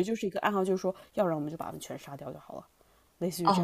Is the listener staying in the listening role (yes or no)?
no